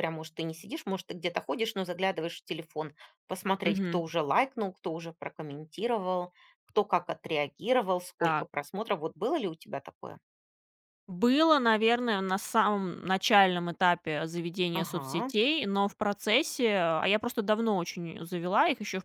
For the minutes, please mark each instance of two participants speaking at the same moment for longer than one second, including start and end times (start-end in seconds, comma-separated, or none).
none